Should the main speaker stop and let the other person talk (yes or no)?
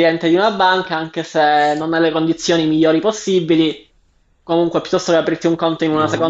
no